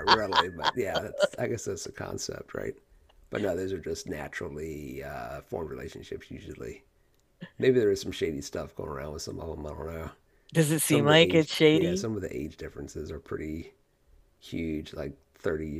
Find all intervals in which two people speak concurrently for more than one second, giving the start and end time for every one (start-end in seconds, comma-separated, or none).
10.8-12.1